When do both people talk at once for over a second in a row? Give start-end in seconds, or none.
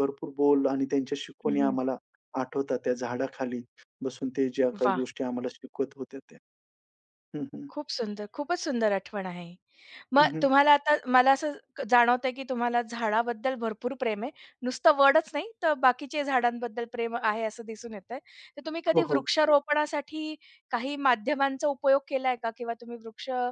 none